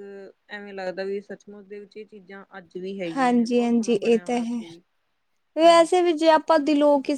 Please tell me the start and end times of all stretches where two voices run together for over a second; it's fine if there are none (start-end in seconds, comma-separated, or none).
3.1-4.6